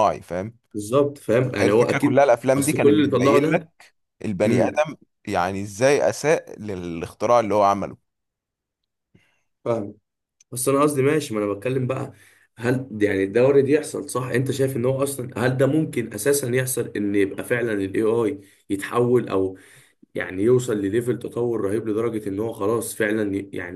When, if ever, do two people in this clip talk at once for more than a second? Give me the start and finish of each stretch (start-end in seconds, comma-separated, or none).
1.6-3.7